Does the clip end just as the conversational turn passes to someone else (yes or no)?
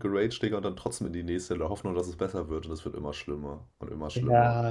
yes